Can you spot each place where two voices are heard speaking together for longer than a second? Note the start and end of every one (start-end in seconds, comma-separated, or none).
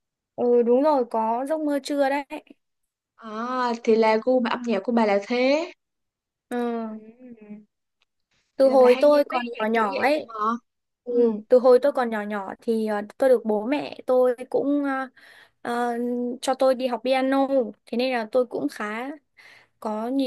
8.6-10.3